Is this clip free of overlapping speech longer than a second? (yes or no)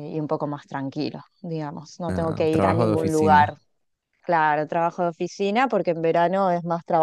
no